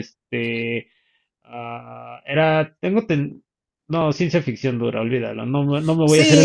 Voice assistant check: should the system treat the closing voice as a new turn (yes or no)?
yes